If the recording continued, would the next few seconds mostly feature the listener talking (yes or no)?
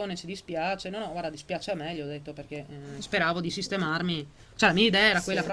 no